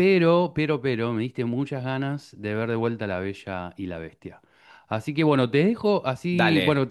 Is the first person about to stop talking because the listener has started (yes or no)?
no